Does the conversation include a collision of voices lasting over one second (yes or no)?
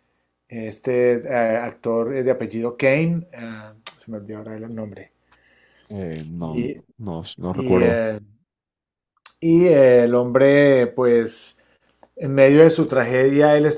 no